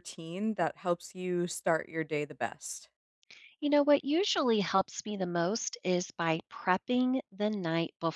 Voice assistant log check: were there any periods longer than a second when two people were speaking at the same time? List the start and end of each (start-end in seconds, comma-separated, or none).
none